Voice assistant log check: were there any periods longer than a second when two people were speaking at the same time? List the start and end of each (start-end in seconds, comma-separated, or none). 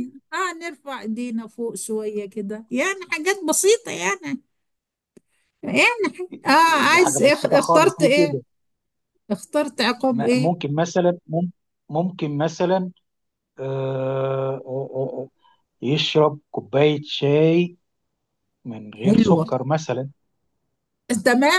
6.9-8.4